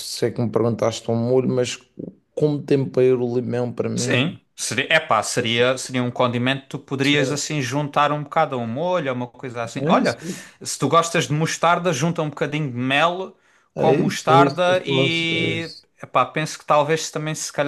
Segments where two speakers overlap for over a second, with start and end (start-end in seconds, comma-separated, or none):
13.8-15.9